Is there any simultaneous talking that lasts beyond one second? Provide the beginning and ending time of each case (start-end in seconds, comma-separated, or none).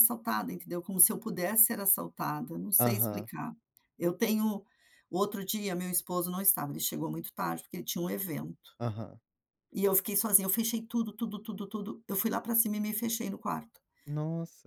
none